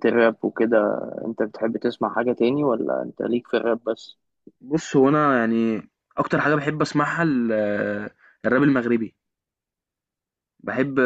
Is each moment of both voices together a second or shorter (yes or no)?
yes